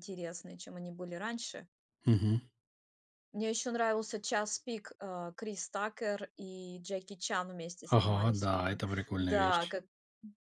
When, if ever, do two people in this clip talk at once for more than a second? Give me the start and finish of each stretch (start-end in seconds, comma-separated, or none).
7.9-9.8